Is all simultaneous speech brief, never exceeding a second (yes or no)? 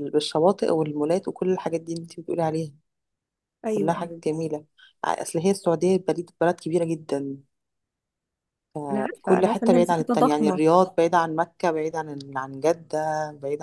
no